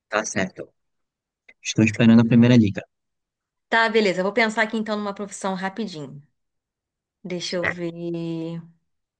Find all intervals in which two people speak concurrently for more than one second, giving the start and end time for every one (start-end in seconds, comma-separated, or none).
none